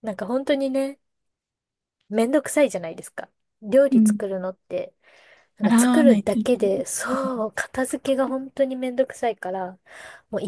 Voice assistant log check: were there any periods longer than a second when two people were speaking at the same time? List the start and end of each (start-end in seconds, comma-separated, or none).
5.6-7.0